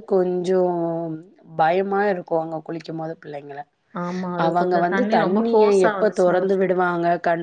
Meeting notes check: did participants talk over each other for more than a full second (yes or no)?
yes